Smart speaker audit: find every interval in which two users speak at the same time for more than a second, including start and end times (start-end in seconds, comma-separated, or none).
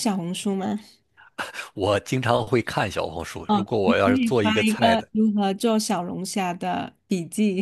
3.5-5.1